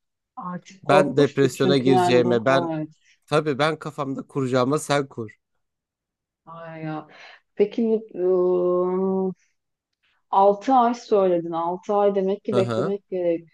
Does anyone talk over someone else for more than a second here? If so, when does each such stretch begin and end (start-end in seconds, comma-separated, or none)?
0.8-2.7